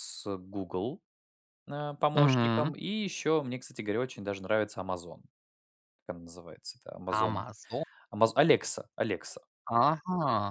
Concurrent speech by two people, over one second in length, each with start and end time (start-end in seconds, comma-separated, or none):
none